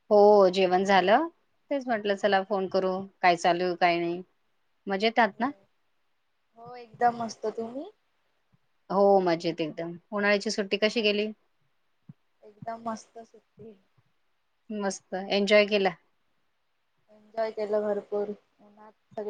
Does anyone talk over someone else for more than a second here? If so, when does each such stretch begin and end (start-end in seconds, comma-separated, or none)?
none